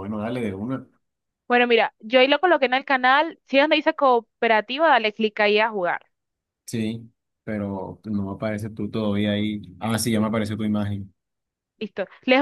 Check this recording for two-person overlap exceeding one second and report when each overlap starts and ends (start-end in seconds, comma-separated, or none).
none